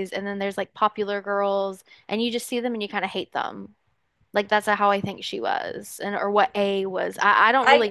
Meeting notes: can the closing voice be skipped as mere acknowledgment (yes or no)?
no